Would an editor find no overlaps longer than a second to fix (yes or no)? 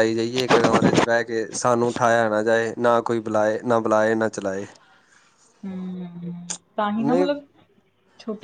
yes